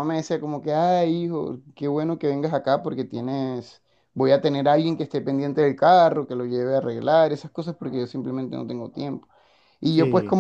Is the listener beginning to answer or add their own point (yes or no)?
no